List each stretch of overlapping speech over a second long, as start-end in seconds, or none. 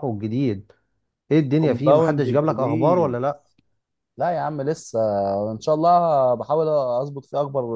1.6-3.2